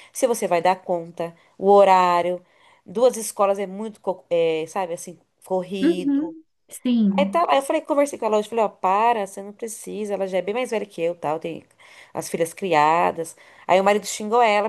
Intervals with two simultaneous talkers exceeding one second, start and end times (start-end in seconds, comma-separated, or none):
none